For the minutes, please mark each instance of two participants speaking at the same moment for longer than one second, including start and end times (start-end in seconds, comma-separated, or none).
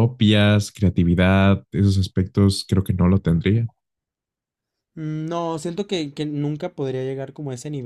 none